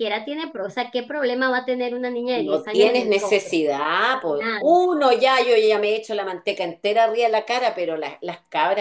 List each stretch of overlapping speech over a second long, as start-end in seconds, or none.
2.3-3.6